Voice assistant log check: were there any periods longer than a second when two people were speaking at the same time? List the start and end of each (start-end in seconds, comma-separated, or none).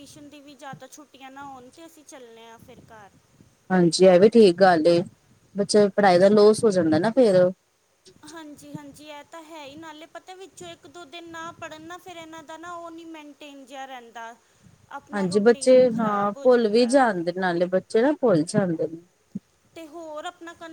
15.1-17.0